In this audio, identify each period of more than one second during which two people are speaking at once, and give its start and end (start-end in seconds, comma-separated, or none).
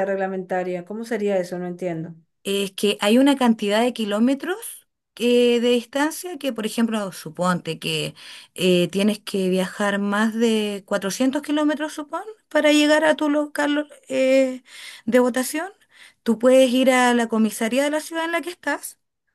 none